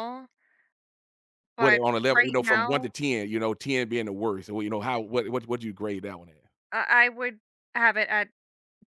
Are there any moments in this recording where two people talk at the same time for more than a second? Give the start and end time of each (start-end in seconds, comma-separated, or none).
1.6-3.0